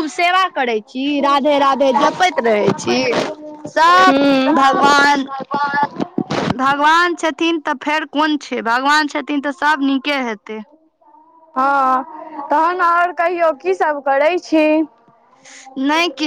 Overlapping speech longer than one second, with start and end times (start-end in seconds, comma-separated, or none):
none